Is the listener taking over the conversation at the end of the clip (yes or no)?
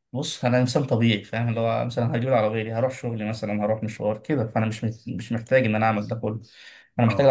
no